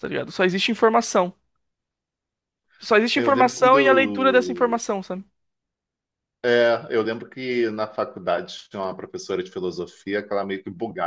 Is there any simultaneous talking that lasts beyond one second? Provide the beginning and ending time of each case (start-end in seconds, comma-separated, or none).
3.1-4.8